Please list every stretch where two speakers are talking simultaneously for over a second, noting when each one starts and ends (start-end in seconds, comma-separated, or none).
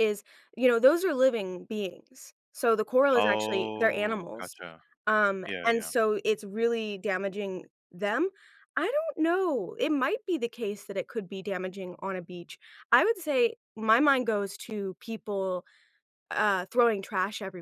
3.1-4.6